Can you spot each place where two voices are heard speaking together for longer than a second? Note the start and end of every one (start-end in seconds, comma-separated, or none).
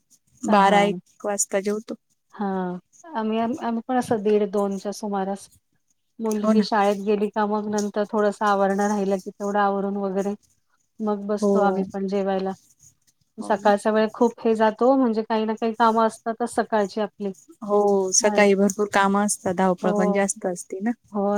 none